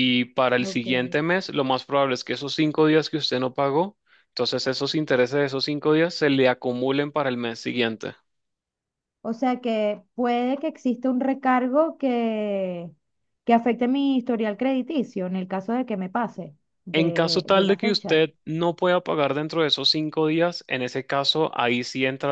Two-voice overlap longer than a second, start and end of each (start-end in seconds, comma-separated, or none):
16.9-18.2